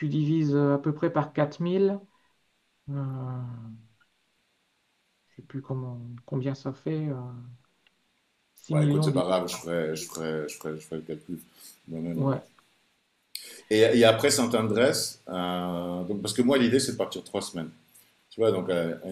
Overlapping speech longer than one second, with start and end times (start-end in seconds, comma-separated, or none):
8.7-10.1